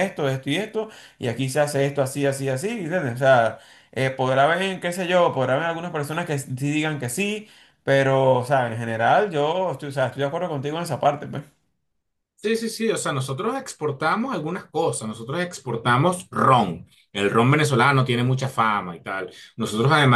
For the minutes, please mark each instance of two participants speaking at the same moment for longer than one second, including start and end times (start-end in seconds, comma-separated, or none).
none